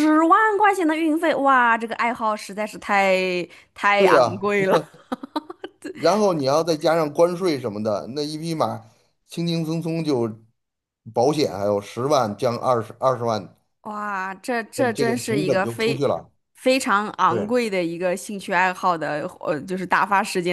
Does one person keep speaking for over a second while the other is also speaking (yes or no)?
yes